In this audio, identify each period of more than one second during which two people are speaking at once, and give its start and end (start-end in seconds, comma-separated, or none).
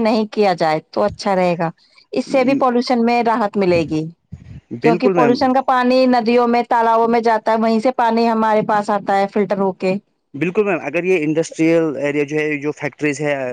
none